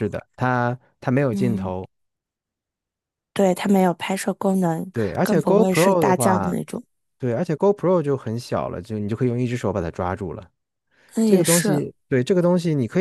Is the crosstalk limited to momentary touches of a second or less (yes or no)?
no